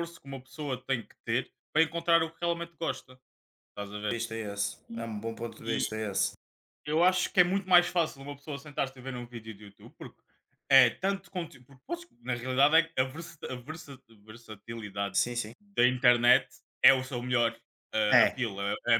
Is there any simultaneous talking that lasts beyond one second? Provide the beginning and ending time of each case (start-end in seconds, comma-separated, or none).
none